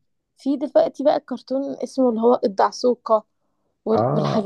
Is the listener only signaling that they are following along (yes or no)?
yes